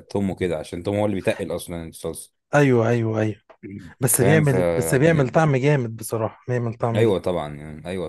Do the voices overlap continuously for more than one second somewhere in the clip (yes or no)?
yes